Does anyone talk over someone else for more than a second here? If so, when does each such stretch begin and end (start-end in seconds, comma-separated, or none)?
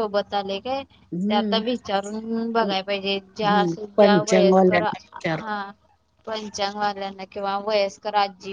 3.3-5.5